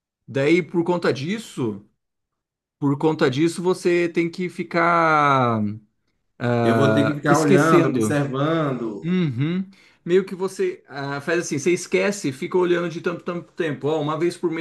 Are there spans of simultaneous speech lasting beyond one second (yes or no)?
yes